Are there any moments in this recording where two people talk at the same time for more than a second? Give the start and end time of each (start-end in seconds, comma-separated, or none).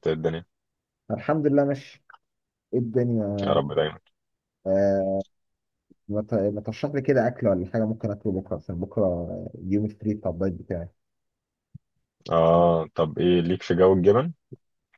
none